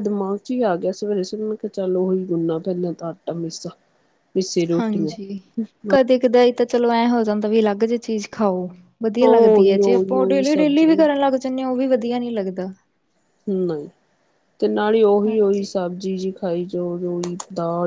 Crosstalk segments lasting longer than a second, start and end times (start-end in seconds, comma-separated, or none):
9.2-10.9